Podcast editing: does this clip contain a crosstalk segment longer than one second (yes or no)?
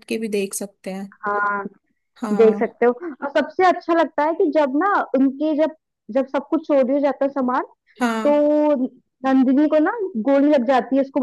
no